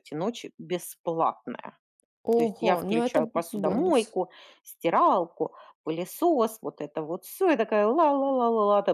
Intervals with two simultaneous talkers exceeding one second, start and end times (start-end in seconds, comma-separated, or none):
2.4-4.2